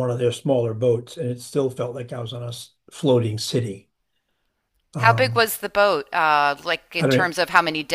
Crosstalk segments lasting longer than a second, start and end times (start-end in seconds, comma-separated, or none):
none